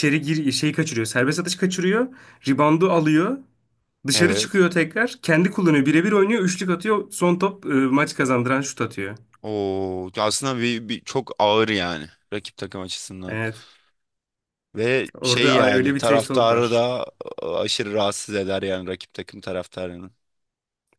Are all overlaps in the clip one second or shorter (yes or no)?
no